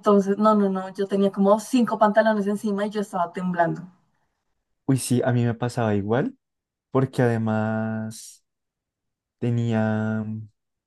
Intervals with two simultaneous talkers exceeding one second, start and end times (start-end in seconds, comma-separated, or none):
none